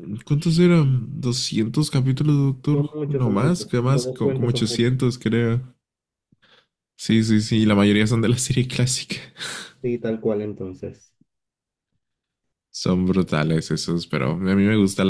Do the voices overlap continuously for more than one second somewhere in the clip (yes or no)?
yes